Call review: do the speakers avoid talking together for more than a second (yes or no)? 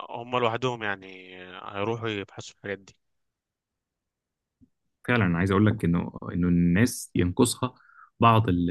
yes